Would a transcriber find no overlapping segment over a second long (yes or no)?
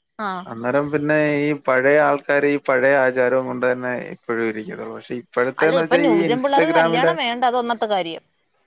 no